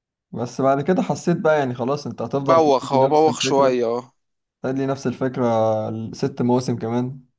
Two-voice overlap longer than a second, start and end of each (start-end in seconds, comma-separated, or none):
2.5-3.8